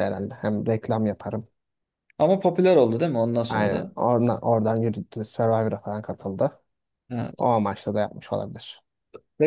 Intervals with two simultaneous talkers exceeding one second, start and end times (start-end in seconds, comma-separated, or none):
none